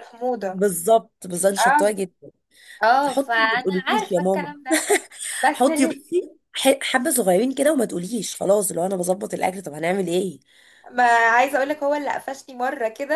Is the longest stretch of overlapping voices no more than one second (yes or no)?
no